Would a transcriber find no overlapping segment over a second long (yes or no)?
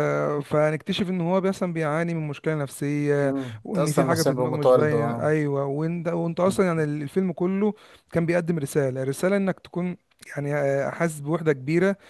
no